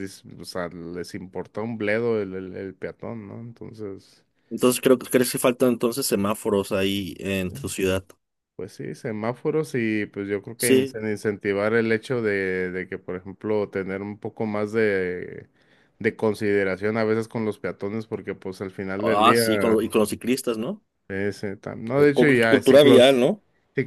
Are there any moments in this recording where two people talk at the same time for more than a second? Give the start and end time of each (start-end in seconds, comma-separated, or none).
21.9-23.2